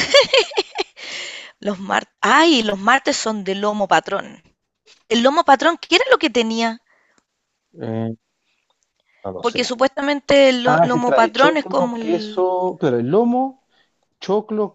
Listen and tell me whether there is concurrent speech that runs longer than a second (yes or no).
yes